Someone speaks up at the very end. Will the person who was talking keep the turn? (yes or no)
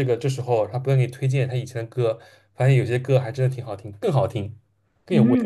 no